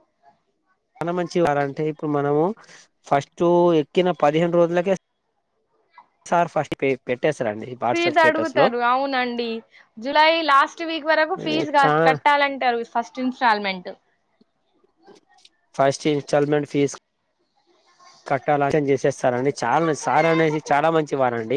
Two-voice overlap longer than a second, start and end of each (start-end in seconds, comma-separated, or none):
none